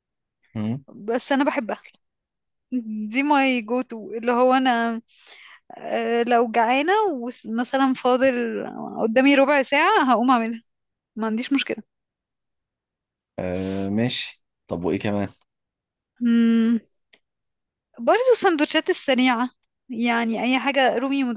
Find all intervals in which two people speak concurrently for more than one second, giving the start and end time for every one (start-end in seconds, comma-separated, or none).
none